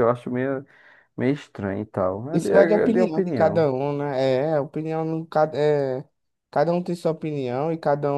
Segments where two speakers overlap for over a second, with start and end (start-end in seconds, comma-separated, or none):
2.3-3.7